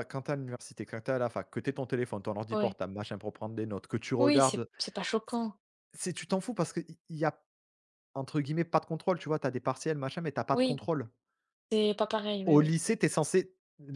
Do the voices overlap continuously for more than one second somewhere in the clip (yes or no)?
no